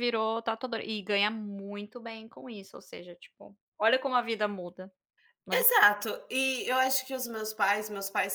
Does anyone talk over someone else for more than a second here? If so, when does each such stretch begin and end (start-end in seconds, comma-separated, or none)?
none